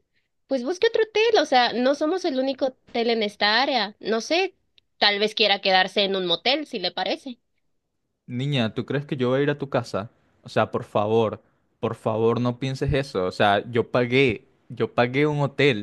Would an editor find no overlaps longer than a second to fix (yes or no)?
yes